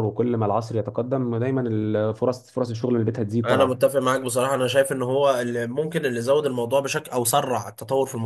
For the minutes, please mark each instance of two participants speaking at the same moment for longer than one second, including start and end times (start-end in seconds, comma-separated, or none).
none